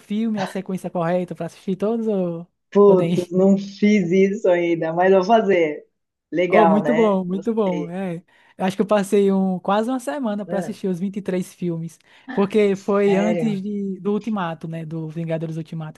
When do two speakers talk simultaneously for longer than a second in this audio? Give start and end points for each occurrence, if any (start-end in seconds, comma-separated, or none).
6.5-7.9